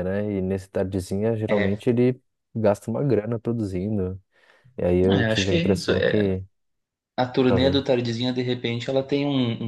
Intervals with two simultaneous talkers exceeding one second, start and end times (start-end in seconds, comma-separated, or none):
5.0-6.4